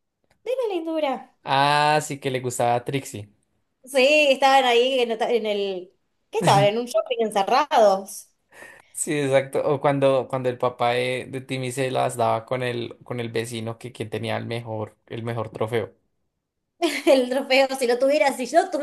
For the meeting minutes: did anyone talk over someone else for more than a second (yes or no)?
no